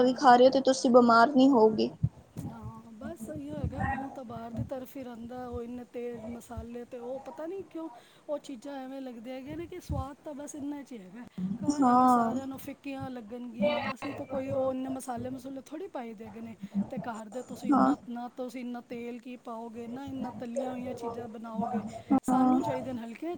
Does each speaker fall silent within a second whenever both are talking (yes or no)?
yes